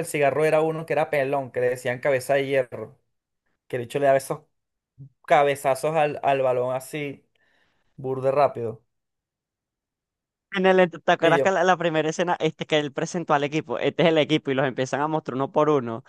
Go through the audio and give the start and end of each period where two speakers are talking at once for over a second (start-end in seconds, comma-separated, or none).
none